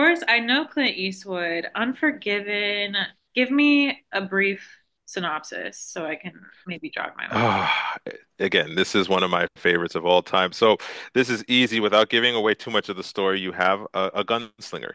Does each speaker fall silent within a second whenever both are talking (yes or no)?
yes